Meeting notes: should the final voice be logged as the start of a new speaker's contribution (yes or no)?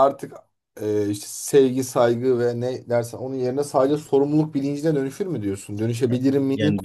yes